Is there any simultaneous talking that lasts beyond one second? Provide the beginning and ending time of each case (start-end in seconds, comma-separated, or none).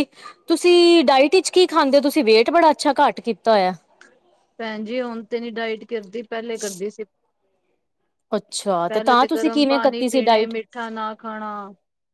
8.9-10.5